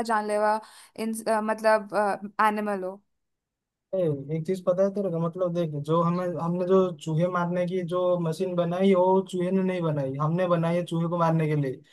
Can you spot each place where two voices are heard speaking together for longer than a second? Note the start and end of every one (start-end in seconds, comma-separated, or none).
none